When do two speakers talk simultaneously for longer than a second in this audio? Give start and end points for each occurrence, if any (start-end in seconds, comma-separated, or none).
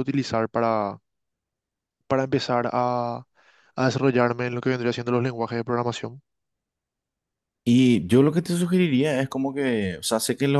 none